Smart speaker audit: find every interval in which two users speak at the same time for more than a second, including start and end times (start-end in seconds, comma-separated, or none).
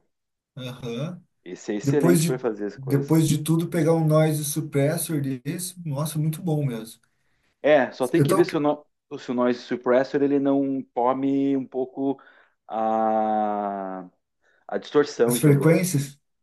1.8-3.3